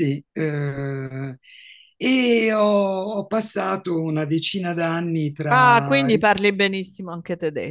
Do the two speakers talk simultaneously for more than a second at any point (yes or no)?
no